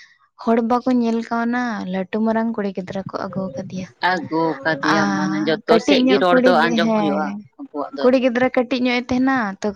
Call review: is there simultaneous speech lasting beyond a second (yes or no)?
yes